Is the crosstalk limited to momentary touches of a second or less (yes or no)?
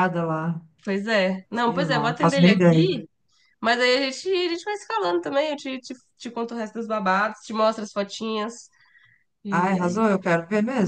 no